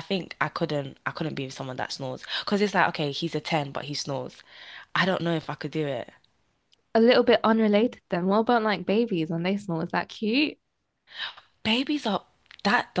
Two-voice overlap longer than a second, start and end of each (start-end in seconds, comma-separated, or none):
none